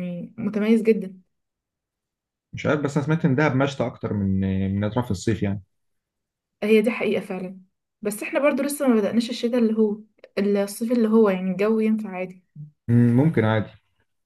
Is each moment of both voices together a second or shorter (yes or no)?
yes